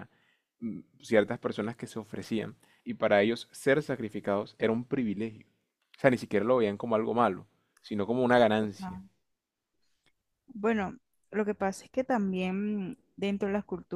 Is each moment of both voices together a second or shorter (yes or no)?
yes